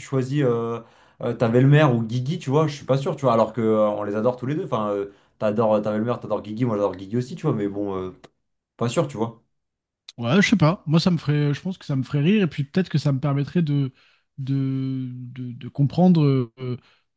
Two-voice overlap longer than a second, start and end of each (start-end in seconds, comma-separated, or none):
none